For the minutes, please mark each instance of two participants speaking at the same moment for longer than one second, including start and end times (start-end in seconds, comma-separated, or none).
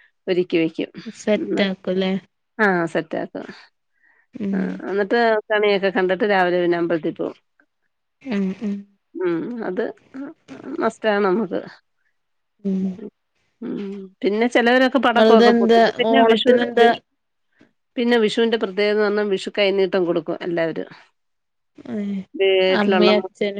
15.1-16.9